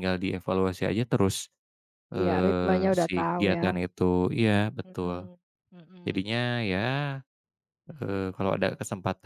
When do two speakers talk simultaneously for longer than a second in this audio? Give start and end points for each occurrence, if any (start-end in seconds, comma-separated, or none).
2.2-3.6